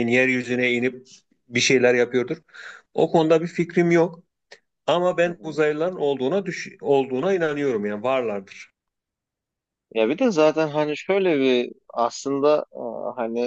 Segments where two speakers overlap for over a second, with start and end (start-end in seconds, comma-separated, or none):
none